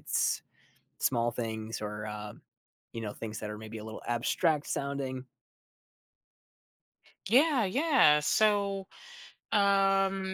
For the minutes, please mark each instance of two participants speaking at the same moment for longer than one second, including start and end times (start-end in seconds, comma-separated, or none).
none